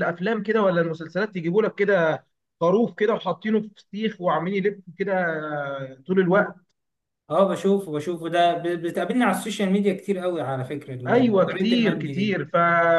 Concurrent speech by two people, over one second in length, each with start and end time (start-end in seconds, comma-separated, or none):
11.1-12.4